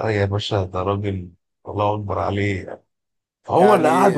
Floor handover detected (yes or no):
no